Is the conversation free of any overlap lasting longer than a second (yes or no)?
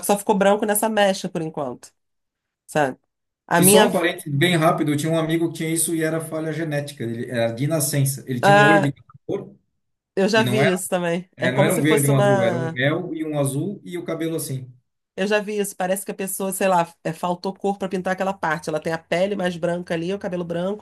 no